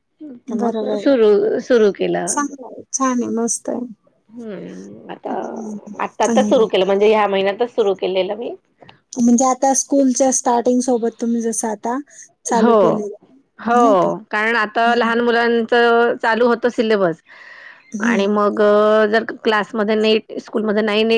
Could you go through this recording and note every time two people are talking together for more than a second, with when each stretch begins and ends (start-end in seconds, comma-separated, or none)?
none